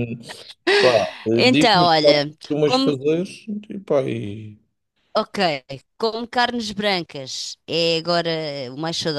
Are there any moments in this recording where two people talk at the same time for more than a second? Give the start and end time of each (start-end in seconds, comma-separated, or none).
1.3-3.0